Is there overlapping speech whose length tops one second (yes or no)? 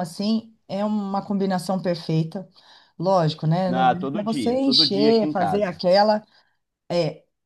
yes